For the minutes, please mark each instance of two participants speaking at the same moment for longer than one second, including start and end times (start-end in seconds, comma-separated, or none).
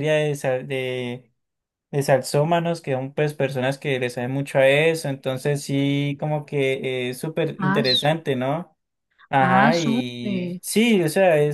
9.4-10.6